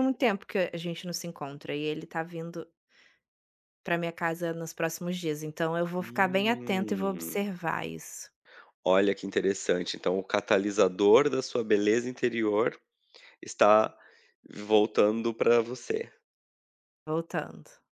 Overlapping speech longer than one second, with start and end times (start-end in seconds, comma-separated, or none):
6.0-7.4